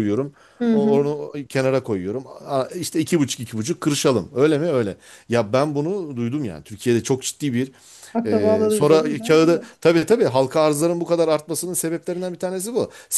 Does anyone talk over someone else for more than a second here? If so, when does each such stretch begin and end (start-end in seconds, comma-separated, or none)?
8.3-9.8